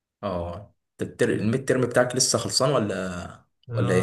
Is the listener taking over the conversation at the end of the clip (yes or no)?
yes